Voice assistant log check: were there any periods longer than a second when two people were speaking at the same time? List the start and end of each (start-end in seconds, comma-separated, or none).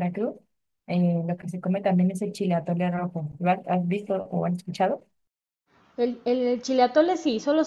none